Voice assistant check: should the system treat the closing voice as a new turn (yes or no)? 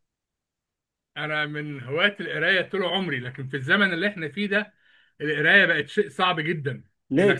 no